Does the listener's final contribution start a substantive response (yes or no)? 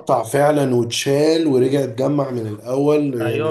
yes